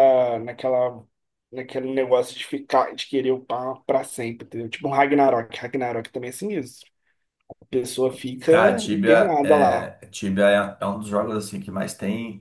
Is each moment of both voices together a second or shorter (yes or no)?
no